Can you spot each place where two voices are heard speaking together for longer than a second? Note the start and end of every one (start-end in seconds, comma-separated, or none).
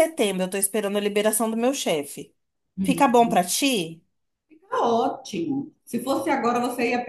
none